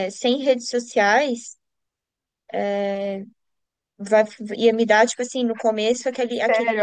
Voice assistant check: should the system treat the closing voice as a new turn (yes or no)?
no